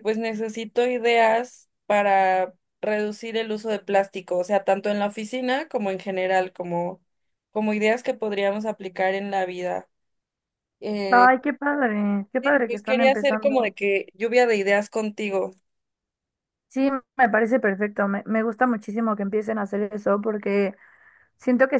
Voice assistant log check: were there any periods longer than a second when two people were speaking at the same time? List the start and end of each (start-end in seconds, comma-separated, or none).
12.4-13.8